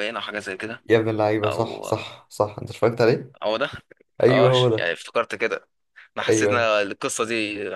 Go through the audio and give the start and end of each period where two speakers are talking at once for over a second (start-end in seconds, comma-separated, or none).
none